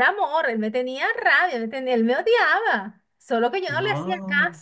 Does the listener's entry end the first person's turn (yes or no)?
no